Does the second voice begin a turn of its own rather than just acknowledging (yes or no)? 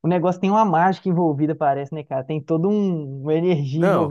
no